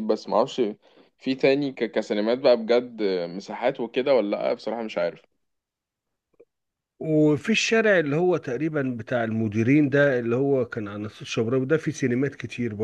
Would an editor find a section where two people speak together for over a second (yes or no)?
no